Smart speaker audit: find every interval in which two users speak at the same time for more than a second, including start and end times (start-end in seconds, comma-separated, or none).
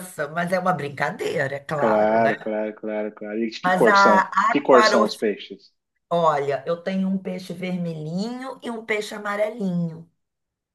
3.6-5.2